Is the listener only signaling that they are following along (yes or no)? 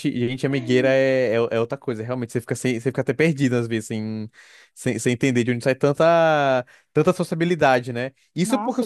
yes